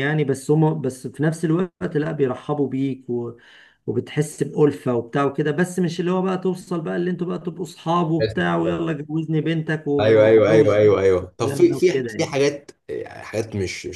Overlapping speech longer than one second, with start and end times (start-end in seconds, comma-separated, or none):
10.0-12.3